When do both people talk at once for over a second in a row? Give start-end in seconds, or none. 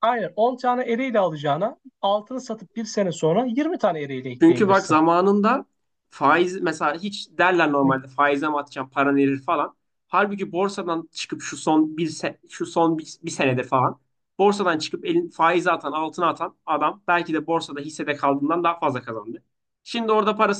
none